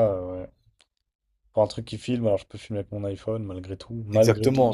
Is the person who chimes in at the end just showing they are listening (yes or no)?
no